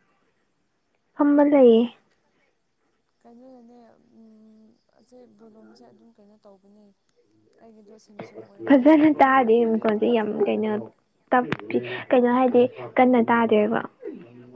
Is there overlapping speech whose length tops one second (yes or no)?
yes